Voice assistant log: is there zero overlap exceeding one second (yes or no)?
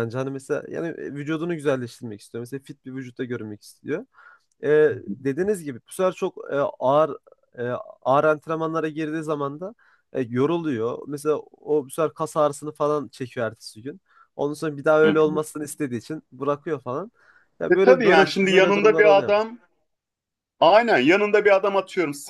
no